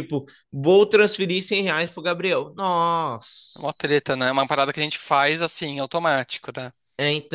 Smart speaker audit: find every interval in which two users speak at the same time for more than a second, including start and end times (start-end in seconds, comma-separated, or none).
none